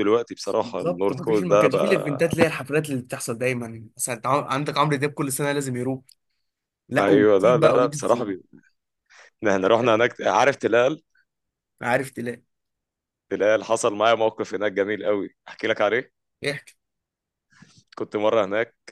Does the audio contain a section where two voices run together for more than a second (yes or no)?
yes